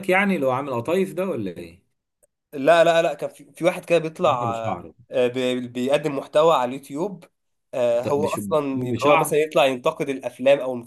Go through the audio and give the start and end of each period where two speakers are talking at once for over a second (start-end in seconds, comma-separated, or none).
7.9-9.5